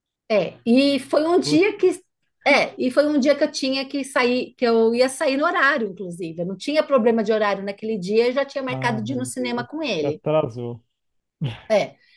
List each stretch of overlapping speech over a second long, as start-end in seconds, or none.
8.7-10.2